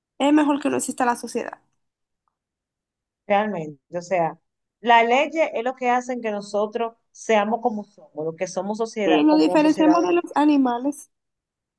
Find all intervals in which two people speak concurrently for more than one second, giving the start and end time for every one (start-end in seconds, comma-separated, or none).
9.0-10.4